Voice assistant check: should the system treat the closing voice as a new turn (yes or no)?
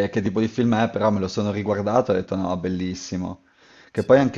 no